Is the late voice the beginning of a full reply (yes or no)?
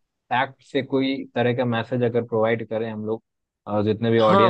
yes